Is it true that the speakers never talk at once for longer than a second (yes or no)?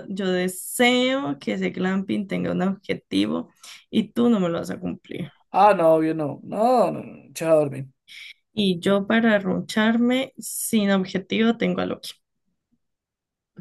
yes